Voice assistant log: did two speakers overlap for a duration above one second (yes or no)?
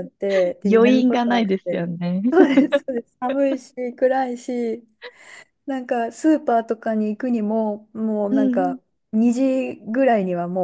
yes